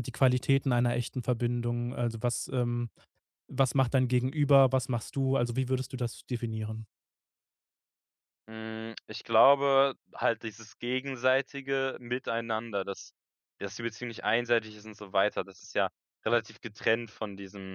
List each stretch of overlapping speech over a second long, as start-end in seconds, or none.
none